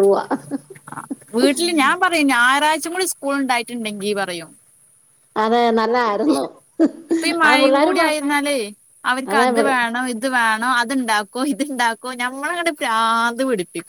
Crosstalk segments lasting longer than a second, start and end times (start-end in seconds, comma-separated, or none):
none